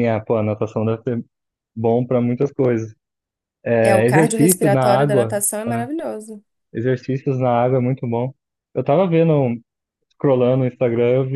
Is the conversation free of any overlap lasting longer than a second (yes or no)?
no